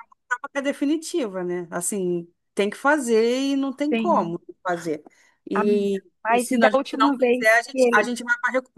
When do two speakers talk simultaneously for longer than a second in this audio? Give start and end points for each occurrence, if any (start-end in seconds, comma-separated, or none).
5.5-8.2